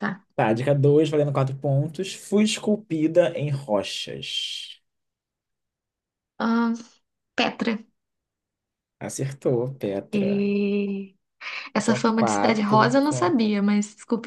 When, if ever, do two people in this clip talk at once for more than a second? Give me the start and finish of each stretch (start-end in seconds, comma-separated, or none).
11.7-13.4